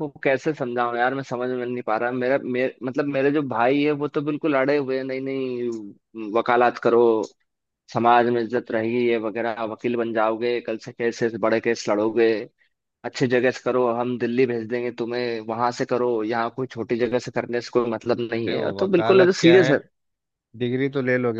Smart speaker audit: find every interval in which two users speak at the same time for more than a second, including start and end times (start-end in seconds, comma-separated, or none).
18.4-19.7